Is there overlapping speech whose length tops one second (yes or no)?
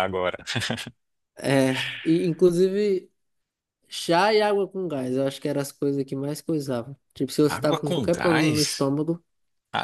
yes